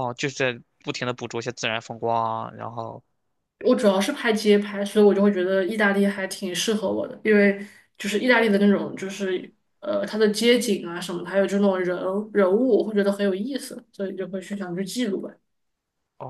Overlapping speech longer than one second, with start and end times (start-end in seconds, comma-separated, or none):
none